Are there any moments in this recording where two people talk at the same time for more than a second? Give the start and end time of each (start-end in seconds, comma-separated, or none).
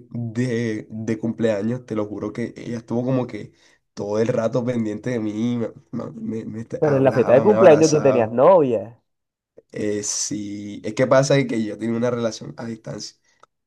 6.8-8.3